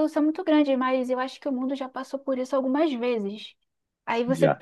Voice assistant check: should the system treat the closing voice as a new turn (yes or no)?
no